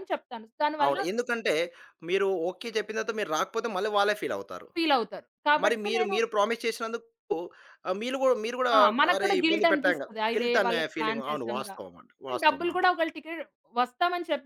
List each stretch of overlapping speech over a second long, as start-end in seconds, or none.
9.1-11.7